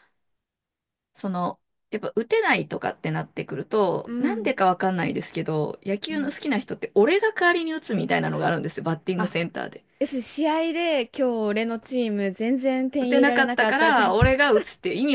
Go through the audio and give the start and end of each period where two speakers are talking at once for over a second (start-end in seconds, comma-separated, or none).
13.0-14.3